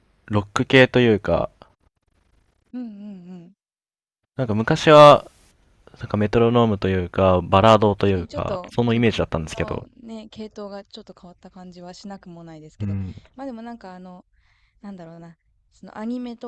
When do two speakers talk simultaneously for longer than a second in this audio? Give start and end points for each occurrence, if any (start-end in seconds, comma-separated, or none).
8.0-9.9